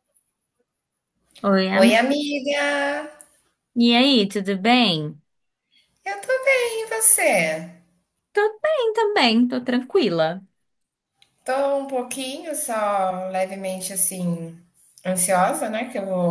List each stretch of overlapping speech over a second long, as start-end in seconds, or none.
none